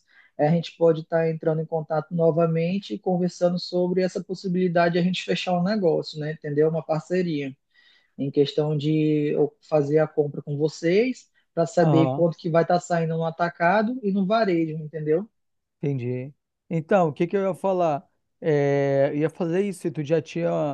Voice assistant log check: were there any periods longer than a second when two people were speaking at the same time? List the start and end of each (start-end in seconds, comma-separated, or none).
none